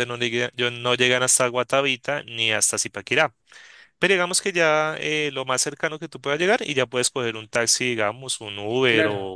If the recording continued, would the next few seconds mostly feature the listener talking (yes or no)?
yes